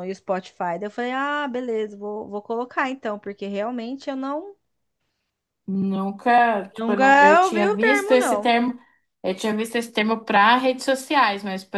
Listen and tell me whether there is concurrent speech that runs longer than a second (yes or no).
yes